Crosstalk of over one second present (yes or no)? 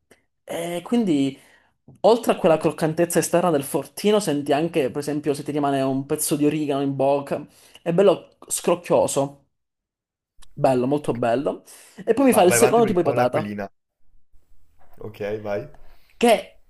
yes